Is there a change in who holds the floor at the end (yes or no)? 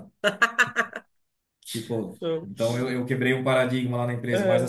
no